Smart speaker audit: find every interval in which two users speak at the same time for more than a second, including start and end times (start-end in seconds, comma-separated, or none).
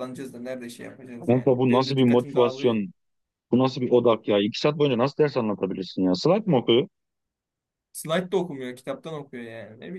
1.3-2.8